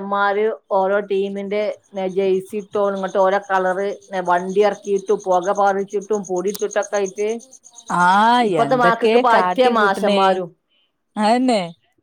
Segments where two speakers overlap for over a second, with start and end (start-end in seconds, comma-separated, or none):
8.5-10.2